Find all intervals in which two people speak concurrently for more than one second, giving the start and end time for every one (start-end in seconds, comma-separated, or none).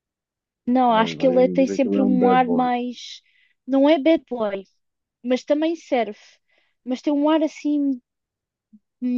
0.9-2.7